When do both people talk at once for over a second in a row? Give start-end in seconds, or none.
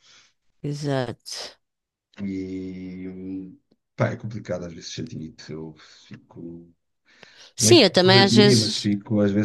7.6-8.9